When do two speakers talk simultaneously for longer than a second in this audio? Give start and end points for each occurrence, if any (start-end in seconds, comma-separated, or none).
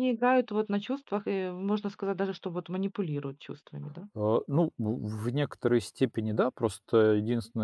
none